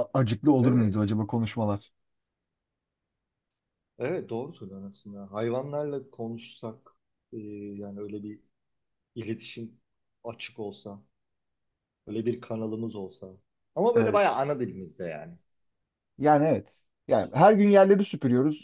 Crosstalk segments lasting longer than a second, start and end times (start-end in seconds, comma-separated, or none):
none